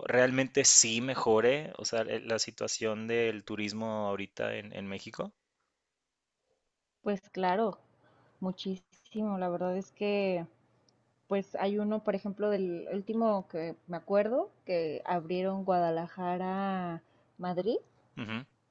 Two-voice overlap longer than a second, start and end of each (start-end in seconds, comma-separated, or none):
none